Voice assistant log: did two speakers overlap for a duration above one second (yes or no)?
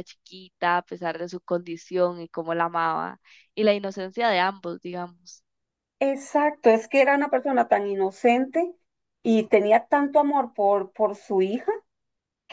no